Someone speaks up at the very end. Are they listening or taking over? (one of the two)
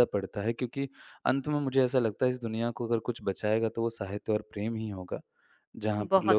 taking over